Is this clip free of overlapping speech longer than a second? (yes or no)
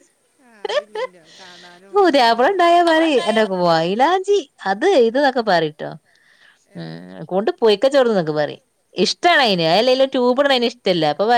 yes